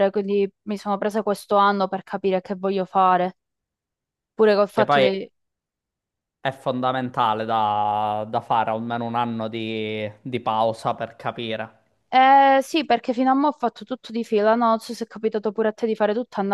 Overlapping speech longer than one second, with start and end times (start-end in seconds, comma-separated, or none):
none